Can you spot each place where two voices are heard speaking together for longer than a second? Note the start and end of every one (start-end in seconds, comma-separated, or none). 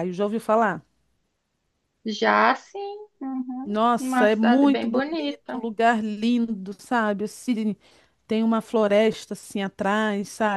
3.6-5.6